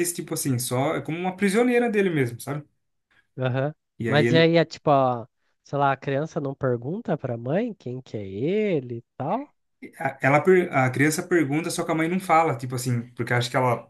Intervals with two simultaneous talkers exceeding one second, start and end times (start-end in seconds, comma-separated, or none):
none